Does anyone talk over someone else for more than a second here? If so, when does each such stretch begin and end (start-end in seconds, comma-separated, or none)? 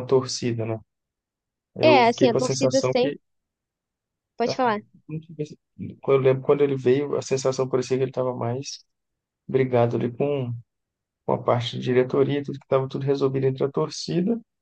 1.8-3.2